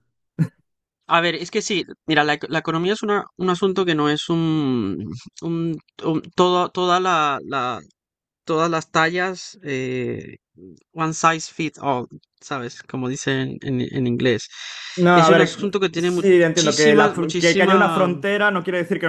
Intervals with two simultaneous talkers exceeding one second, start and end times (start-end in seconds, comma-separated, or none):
15.1-18.1